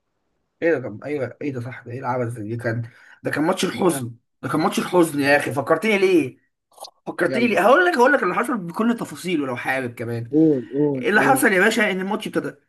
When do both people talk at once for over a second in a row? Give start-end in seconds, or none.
none